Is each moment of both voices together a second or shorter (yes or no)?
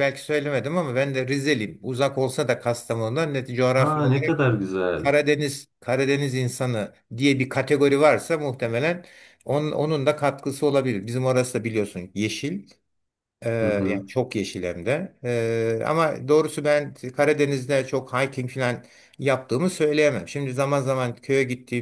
yes